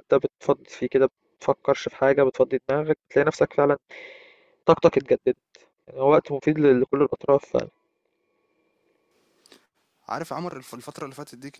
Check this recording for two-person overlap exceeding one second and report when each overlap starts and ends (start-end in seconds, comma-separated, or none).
none